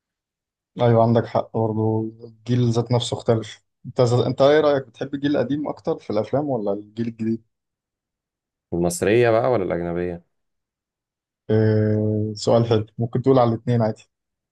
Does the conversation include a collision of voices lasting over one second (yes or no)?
no